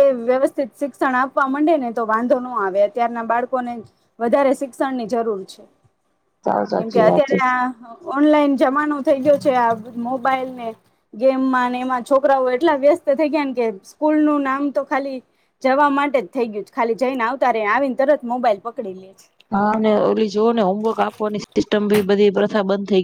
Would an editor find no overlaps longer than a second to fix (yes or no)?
yes